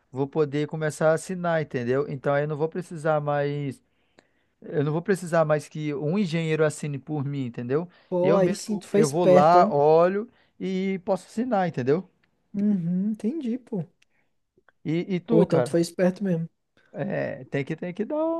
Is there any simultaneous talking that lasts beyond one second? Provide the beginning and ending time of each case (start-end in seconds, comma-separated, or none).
8.2-9.7